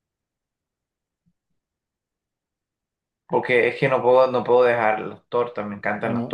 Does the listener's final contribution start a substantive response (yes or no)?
yes